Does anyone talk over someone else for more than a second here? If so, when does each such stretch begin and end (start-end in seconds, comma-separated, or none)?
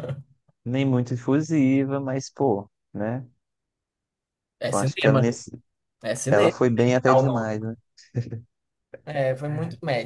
6.3-7.6